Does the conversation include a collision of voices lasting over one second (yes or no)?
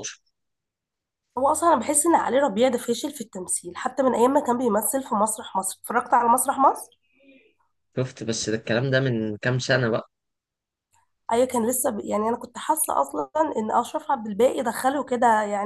no